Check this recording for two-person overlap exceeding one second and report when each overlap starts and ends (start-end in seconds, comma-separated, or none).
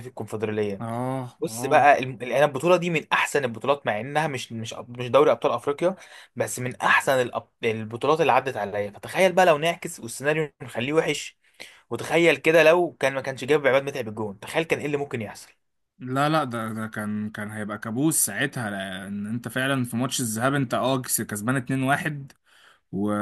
none